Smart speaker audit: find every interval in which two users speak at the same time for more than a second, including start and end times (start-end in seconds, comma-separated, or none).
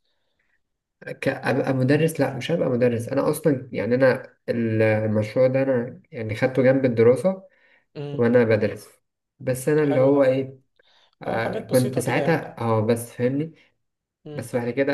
11.2-12.5